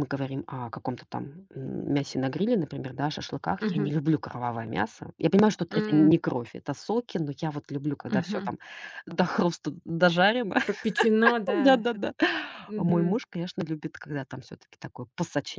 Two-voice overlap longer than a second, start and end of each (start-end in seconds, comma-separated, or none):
none